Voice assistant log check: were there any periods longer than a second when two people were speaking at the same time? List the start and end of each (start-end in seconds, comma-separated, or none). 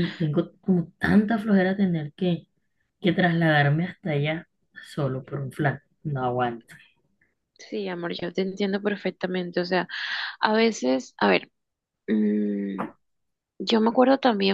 none